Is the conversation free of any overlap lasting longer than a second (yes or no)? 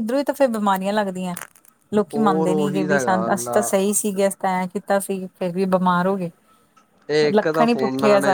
no